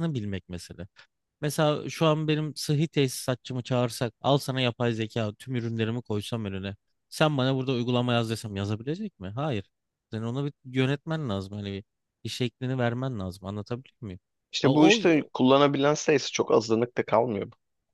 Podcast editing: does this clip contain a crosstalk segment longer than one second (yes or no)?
no